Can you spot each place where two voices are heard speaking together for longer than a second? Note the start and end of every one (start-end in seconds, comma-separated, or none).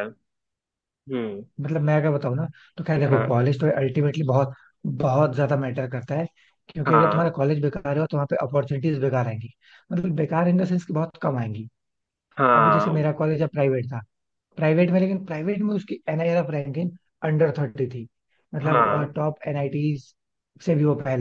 none